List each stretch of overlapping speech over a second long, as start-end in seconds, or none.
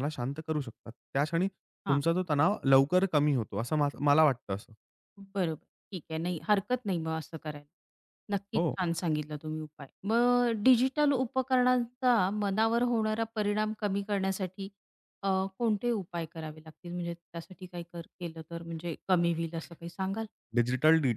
none